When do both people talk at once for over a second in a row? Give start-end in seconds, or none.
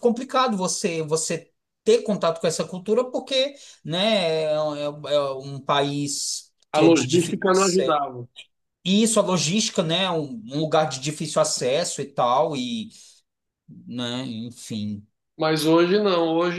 6.7-8.0